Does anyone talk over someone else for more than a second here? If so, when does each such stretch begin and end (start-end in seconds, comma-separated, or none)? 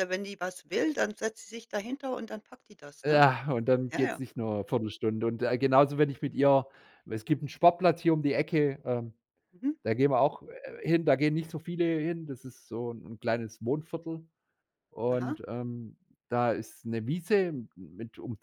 none